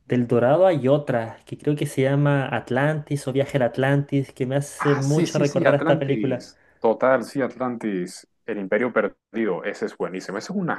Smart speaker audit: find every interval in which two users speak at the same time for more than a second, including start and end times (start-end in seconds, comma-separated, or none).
4.8-6.4